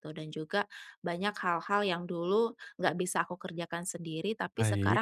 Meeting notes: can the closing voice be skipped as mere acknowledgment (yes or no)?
yes